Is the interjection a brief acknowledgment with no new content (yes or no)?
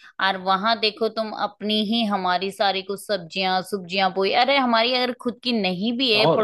yes